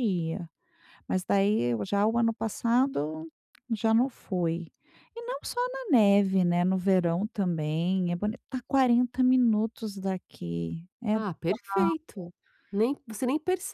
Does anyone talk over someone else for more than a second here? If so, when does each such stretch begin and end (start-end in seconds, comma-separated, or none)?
none